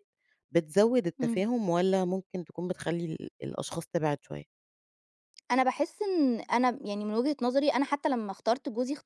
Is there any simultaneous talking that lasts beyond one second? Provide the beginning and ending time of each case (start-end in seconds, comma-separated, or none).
none